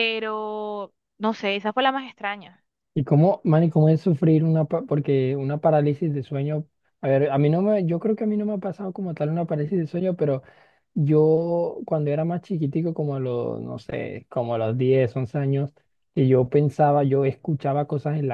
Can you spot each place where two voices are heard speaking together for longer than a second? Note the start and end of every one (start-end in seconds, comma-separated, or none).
none